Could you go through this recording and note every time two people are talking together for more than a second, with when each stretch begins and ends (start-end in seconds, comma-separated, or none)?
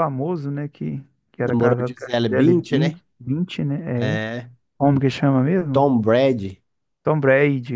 1.4-3.0